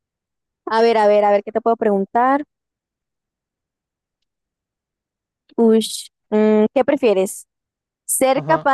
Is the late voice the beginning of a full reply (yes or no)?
no